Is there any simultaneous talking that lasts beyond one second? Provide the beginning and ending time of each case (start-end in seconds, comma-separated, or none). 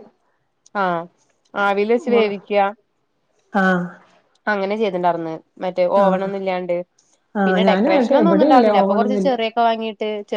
7.5-9.3